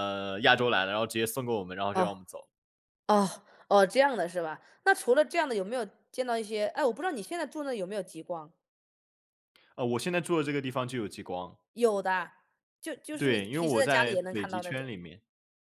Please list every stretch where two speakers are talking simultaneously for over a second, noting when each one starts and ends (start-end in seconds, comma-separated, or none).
13.2-14.9